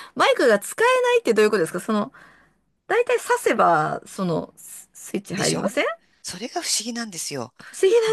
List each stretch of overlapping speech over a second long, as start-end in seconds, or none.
none